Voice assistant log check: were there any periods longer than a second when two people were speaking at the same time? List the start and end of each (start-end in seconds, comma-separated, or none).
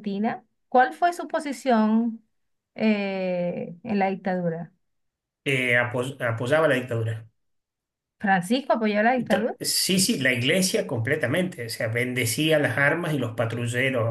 none